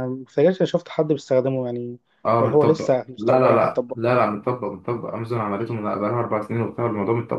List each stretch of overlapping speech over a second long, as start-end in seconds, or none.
2.4-4.0